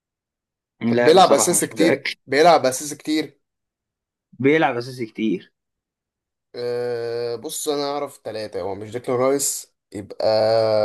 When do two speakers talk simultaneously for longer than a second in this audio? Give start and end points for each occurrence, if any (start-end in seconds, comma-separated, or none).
0.9-2.1